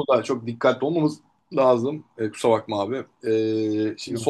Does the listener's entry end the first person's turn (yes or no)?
no